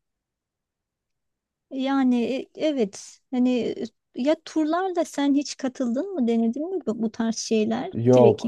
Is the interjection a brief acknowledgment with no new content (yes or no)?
no